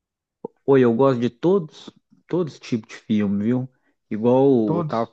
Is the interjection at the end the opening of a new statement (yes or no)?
no